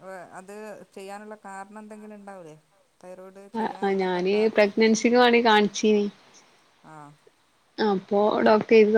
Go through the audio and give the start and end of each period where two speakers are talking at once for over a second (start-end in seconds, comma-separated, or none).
none